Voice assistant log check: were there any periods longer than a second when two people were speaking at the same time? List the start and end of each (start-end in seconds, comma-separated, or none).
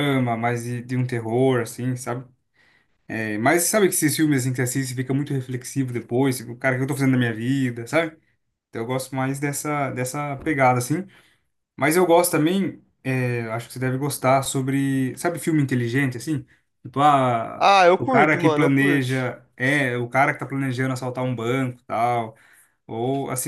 17.6-19.1